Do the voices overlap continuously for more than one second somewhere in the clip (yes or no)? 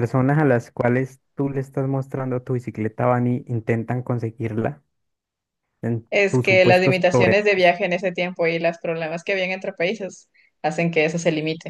yes